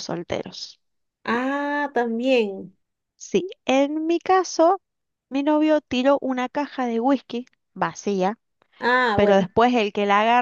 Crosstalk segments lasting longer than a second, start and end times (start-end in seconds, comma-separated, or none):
none